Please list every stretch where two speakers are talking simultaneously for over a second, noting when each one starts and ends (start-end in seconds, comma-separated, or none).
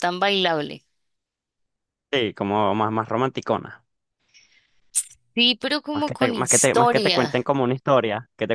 5.9-7.4